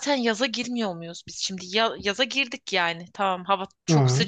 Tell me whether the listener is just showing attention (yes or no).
yes